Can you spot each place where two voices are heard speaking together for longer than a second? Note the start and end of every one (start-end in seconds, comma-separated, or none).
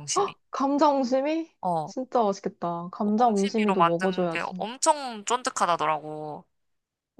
3.0-4.7